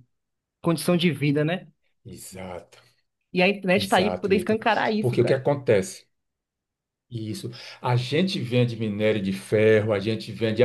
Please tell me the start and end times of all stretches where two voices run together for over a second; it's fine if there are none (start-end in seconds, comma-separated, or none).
3.7-5.4